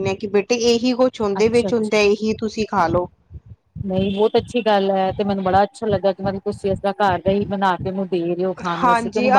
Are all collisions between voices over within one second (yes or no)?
yes